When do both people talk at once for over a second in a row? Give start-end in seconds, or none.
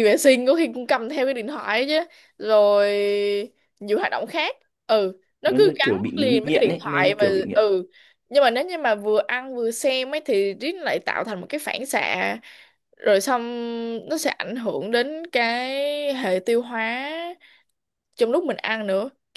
5.4-7.6